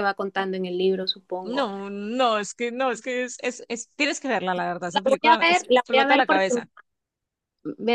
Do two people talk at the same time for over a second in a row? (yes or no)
yes